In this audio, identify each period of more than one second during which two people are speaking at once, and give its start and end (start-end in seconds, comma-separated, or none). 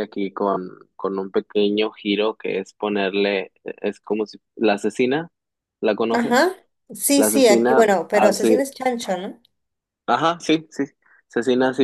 7.2-8.6